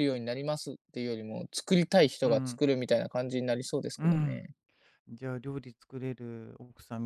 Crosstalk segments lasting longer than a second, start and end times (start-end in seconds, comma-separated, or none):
none